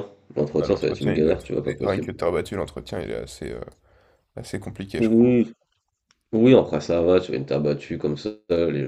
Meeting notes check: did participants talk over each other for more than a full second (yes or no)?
yes